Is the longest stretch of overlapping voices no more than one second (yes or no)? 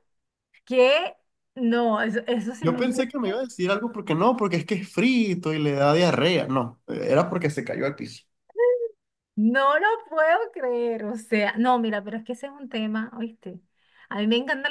yes